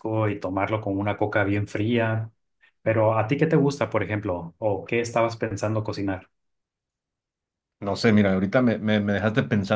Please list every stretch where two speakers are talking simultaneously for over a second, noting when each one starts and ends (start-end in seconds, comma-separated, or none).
none